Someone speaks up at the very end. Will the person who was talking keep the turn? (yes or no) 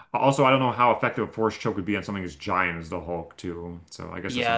no